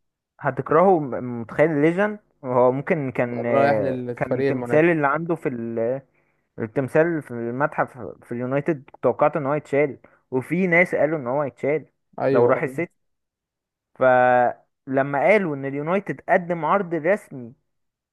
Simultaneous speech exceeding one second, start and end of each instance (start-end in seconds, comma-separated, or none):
3.3-4.9